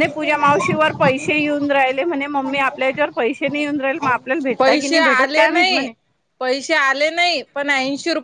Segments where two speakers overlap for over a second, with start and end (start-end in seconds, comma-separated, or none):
4.6-5.9